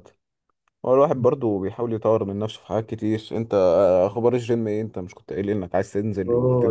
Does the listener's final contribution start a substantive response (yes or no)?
yes